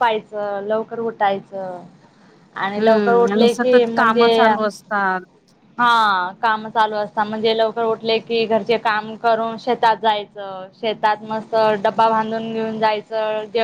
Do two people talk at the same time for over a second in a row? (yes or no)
yes